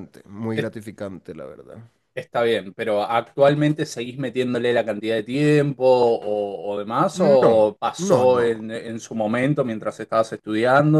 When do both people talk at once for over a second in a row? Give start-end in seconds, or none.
7.1-8.5